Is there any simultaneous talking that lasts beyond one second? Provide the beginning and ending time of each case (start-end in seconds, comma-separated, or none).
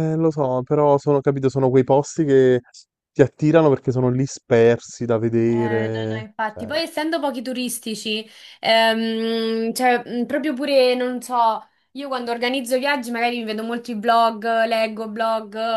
5.5-6.8